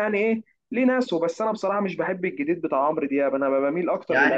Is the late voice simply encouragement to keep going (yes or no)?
no